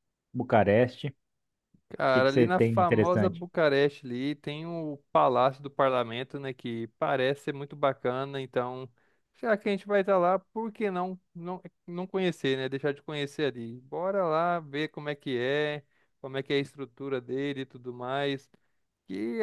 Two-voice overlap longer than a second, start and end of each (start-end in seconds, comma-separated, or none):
2.1-3.5